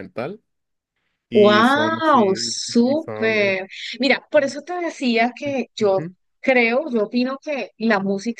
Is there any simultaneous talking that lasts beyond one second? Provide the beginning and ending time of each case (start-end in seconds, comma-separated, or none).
1.3-3.6